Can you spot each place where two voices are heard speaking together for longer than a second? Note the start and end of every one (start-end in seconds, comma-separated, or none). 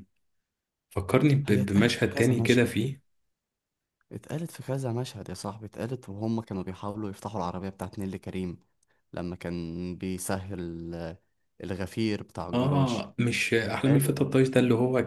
1.4-2.8